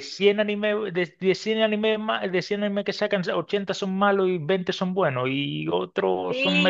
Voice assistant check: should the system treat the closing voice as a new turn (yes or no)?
yes